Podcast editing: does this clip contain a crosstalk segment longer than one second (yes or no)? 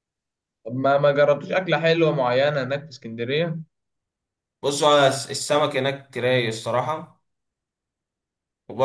no